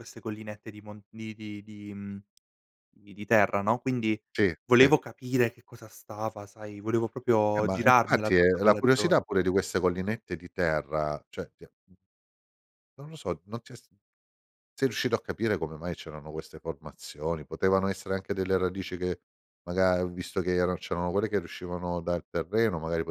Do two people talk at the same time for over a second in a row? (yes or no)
yes